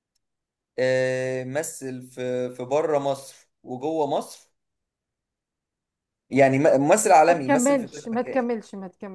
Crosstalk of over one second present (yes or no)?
yes